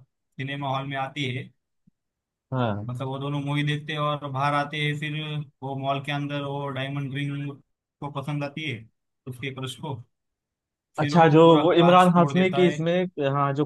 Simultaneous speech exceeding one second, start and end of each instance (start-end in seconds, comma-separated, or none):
11.0-12.8